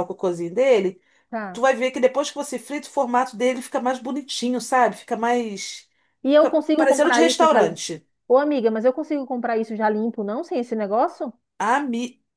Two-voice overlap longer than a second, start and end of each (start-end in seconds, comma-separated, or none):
6.4-7.8